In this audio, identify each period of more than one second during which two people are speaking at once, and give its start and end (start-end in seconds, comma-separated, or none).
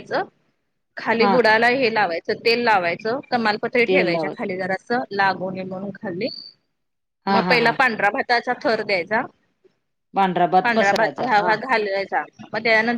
none